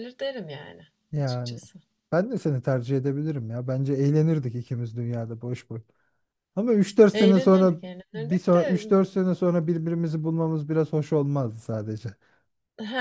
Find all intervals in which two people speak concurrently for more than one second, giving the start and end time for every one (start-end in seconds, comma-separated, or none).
7.1-8.8